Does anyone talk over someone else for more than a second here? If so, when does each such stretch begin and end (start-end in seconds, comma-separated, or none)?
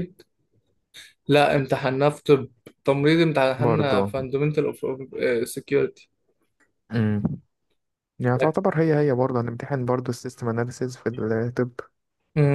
none